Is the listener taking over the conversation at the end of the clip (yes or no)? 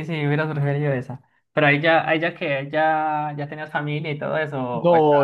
yes